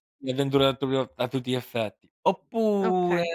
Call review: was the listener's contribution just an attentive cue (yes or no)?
yes